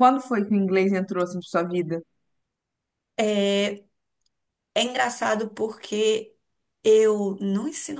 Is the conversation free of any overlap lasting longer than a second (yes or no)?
yes